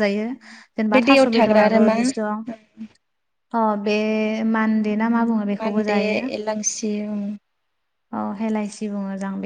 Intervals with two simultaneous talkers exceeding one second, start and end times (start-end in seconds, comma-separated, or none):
0.9-2.5